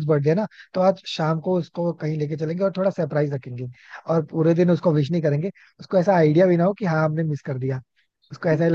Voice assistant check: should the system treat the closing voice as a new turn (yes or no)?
yes